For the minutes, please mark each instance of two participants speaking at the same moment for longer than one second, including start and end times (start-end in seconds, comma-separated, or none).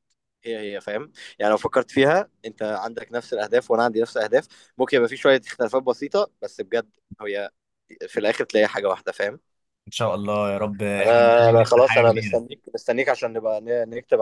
11.0-12.5